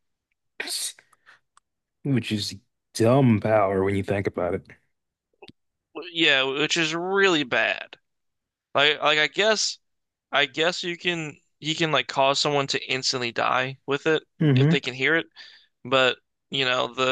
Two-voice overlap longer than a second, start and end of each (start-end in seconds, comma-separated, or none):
none